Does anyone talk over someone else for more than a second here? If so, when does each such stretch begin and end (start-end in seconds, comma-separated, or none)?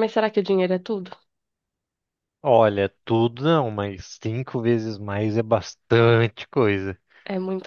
none